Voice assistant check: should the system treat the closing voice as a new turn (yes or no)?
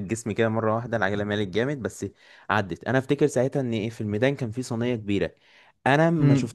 no